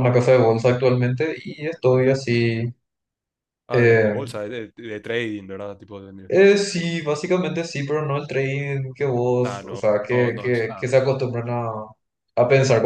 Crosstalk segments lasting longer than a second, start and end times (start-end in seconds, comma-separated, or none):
9.4-10.8